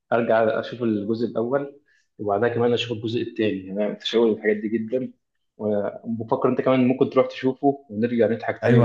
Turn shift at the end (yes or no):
yes